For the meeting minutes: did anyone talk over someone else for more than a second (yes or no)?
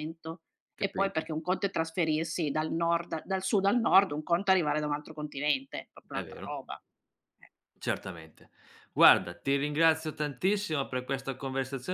no